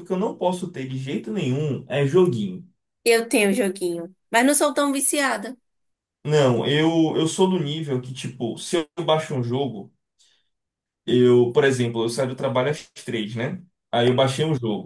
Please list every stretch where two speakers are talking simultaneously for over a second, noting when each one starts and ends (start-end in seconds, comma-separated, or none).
none